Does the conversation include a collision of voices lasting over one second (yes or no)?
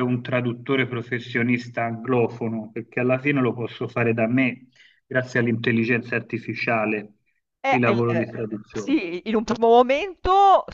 yes